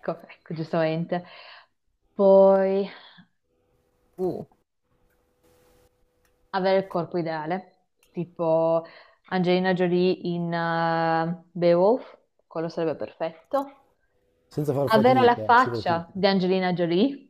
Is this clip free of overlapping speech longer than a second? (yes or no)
no